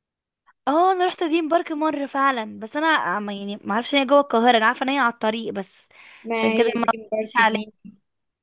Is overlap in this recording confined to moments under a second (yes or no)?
no